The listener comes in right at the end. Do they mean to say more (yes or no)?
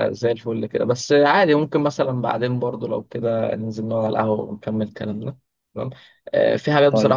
no